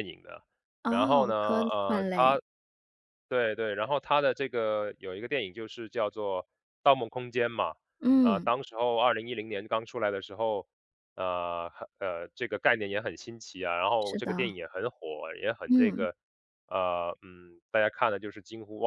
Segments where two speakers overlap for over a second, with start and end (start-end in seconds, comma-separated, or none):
0.9-2.4